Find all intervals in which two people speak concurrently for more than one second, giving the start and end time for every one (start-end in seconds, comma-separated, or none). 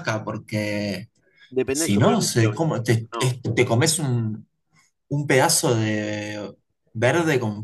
1.7-3.4